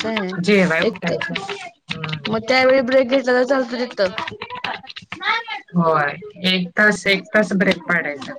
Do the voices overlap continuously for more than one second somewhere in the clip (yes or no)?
no